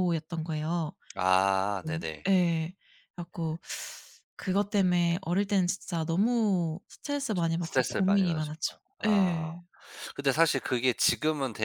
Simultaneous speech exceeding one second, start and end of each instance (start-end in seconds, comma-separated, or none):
7.3-9.4